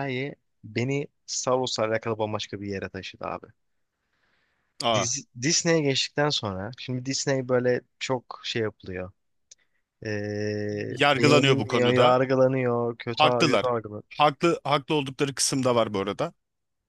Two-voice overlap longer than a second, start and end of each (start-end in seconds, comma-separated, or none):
10.9-12.2